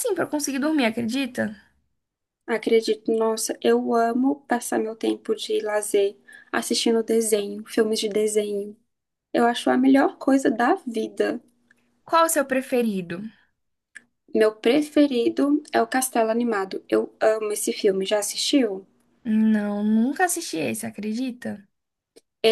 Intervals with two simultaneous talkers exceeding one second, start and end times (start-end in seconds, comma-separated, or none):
none